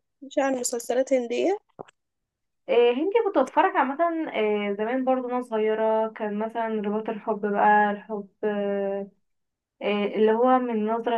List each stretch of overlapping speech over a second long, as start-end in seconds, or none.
none